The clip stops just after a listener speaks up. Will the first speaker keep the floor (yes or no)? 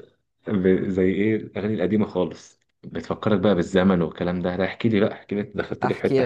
no